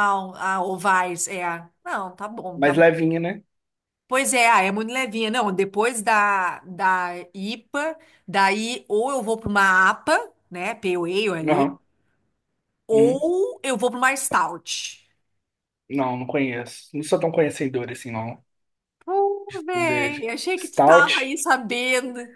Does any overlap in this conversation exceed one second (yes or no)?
yes